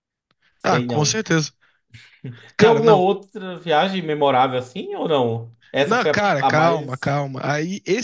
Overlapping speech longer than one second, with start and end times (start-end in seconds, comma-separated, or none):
5.8-7.1